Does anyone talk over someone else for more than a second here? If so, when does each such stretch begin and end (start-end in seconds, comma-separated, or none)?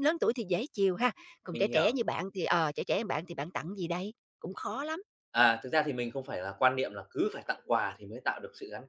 none